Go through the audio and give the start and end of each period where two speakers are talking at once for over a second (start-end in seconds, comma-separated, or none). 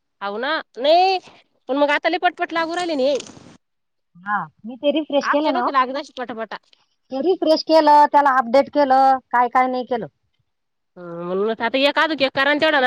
none